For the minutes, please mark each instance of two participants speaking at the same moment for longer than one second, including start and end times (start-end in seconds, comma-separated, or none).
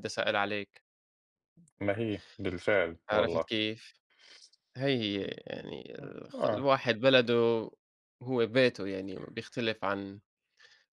none